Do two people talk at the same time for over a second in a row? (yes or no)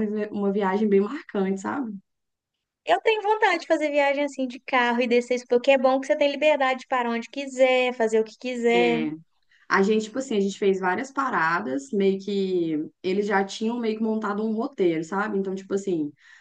no